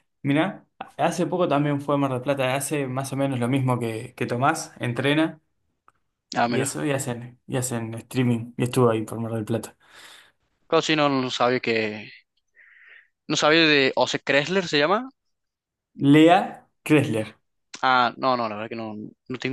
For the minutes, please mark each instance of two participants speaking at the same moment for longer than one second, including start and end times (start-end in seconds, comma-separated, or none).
none